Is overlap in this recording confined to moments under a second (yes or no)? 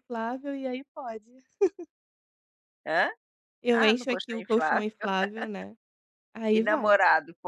no